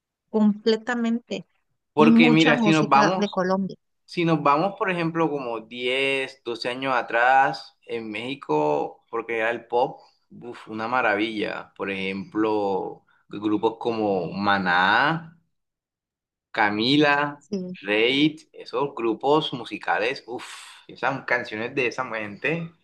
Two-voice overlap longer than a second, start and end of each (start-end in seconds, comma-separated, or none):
2.0-3.4